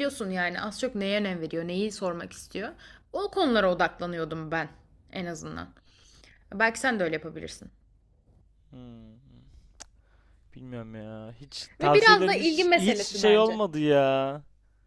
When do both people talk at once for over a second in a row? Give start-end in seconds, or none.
11.8-13.6